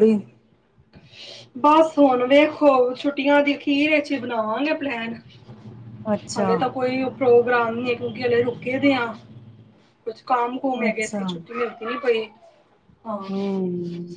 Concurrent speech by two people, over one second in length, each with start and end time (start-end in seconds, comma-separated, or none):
none